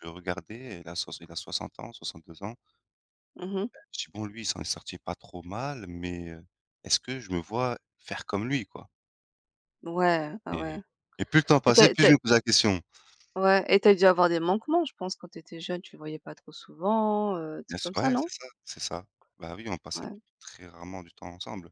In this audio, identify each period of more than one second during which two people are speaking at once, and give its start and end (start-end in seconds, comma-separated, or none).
none